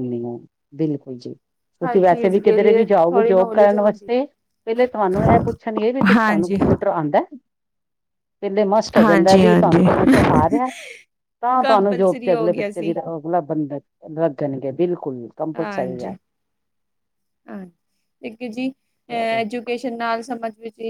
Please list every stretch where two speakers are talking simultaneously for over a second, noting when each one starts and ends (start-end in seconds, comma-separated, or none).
1.9-4.1, 9.0-10.4, 11.6-13.0